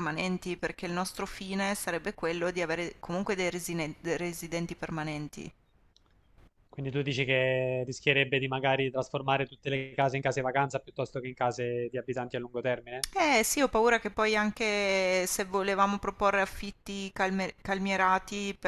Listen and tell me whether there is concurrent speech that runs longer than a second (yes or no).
no